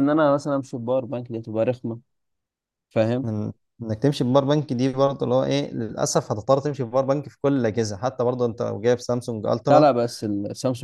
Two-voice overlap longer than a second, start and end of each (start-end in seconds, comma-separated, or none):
none